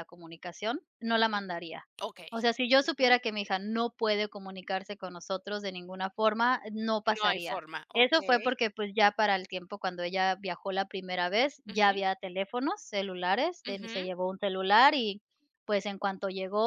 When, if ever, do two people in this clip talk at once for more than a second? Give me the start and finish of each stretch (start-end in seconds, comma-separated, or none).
7.2-8.6